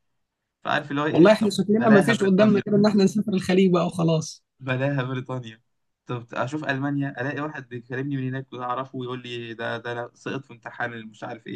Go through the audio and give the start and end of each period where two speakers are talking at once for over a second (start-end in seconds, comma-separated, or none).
1.1-2.6